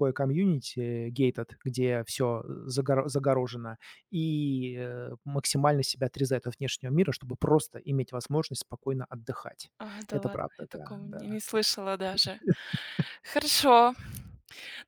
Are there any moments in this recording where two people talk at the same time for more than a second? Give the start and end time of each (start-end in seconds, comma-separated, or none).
10.1-11.4